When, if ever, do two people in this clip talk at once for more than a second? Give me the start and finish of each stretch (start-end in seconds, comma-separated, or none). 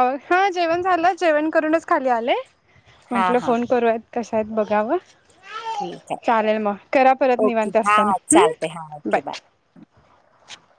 7.4-9.2